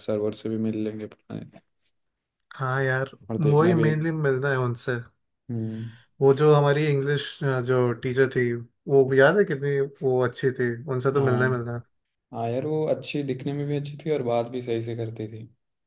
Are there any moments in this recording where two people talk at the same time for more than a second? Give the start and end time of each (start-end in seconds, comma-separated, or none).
none